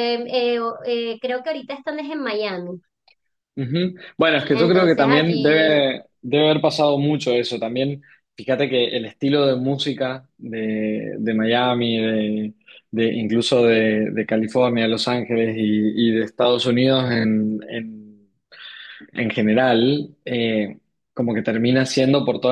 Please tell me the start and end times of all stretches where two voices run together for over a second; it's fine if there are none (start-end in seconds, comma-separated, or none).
4.5-5.9